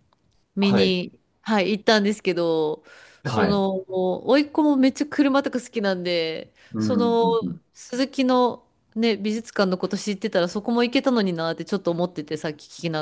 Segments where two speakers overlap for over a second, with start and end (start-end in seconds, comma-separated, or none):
none